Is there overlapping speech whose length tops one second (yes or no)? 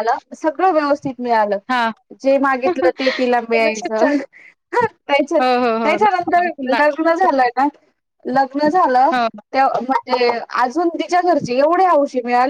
yes